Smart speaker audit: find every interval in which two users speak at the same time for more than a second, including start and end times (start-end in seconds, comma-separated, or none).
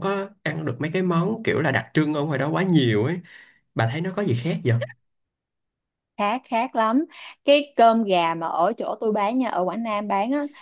none